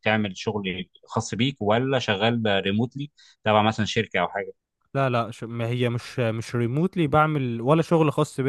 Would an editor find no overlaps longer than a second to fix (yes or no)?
yes